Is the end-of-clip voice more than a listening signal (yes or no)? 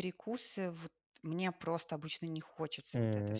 no